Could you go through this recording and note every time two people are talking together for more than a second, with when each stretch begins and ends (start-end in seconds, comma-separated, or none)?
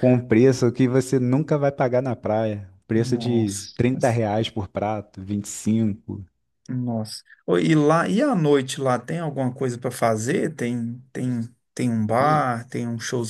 2.9-4.2